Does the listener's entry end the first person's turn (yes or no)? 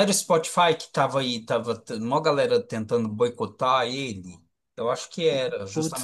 yes